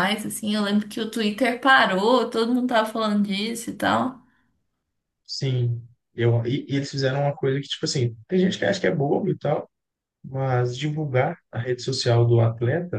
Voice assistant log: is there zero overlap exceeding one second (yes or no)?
yes